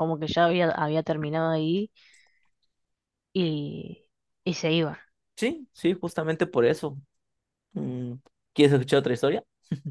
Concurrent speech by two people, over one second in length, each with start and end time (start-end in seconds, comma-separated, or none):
none